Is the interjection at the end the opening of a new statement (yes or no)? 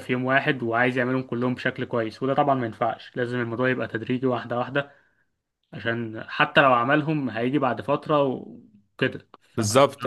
yes